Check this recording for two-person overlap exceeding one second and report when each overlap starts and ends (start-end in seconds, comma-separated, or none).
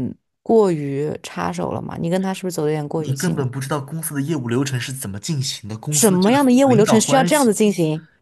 5.9-7.5